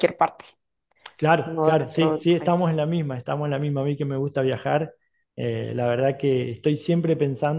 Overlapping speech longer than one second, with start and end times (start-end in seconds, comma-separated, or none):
1.4-2.8